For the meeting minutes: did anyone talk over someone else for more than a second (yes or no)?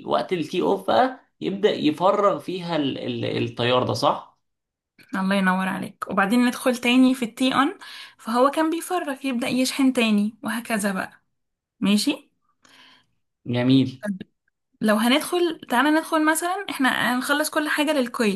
no